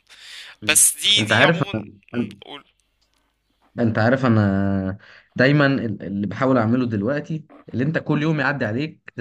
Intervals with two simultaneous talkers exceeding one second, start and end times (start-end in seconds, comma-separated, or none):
none